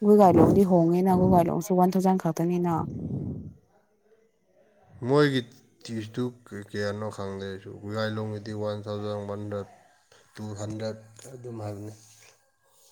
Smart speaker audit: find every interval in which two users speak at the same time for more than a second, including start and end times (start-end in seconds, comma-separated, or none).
none